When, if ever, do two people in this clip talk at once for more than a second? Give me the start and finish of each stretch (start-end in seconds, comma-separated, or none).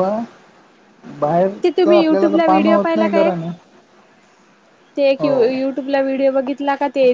1.6-3.4